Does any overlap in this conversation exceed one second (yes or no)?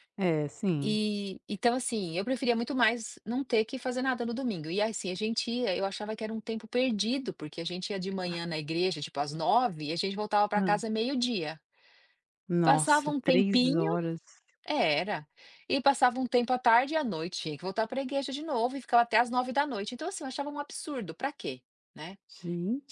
yes